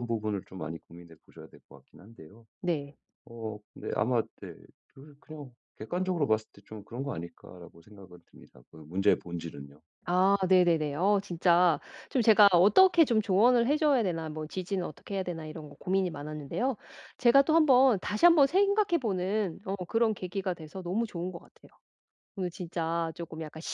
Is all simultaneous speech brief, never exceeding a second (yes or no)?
yes